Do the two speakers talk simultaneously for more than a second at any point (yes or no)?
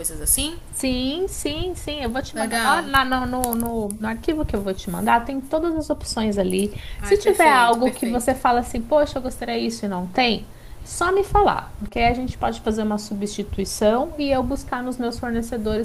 yes